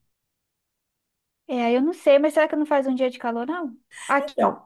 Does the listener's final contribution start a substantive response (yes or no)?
no